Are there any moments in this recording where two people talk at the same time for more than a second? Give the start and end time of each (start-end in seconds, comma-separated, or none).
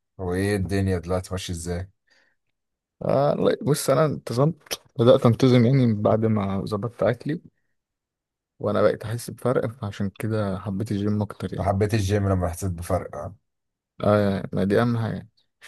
none